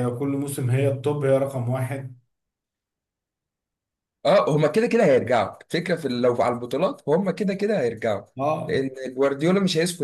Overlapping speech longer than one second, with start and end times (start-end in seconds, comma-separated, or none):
none